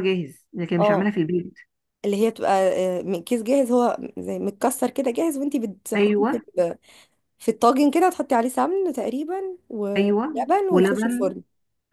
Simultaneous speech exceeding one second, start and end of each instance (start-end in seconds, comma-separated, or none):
10.0-11.3